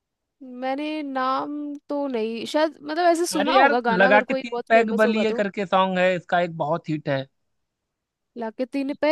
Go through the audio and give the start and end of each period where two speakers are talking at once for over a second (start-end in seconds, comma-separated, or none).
3.4-5.4